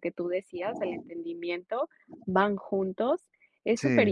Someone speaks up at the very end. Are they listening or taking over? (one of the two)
listening